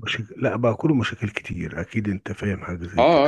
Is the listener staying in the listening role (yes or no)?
no